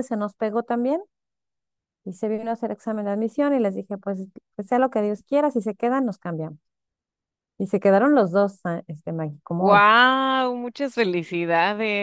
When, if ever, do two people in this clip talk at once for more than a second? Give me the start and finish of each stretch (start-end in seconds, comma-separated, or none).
none